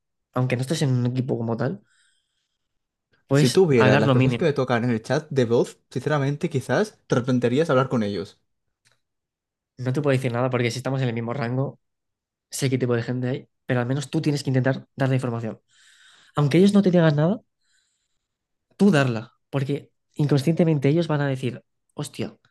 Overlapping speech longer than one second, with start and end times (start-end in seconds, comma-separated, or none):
3.3-4.5